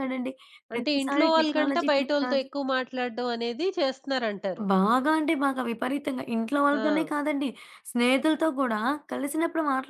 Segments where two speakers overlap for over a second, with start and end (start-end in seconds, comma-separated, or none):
0.7-2.5